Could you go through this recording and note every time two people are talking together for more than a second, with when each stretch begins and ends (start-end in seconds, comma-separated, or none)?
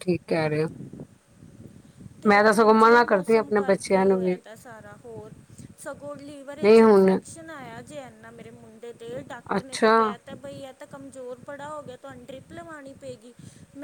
2.7-4.3